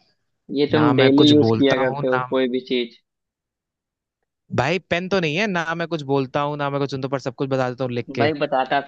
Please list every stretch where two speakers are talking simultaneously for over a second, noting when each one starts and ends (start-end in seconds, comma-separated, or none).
0.7-2.2